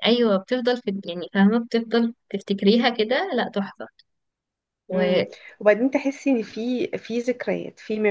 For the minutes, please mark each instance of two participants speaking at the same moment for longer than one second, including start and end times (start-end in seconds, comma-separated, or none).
none